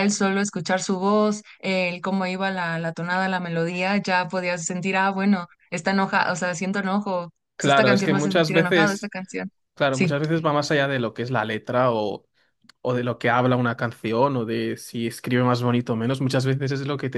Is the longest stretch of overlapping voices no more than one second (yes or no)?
no